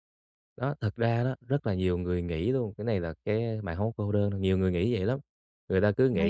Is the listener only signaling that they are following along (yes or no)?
yes